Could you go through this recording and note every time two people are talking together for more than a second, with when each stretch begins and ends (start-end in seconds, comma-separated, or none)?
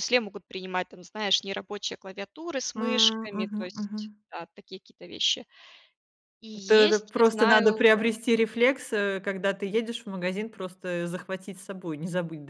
2.8-4.2, 6.7-8.1